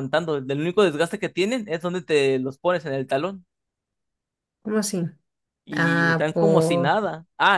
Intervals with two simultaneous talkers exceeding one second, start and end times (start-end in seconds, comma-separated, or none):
5.7-6.9